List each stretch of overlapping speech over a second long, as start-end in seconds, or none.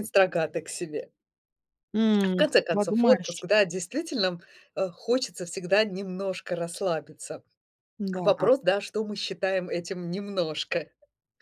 2.2-3.5